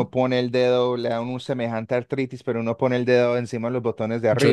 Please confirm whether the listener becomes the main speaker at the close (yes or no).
yes